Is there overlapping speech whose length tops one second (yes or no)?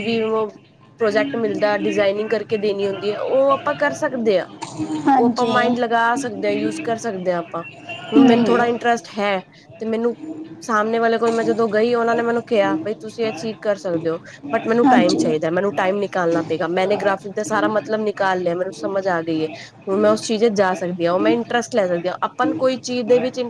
no